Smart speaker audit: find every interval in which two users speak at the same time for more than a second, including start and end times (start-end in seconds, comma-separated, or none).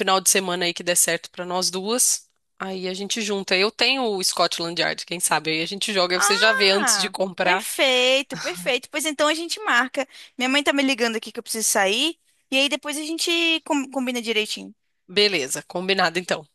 6.2-7.7